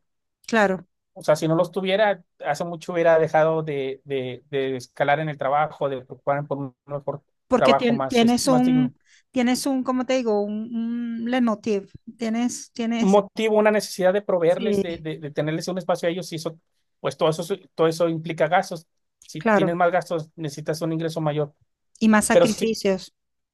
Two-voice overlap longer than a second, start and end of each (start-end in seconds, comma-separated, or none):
7.5-8.9